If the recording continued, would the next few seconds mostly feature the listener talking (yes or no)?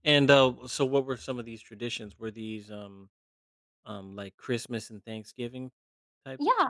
yes